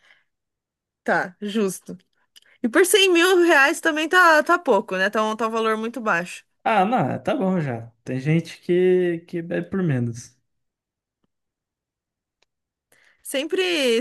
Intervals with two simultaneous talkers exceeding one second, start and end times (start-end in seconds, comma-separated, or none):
none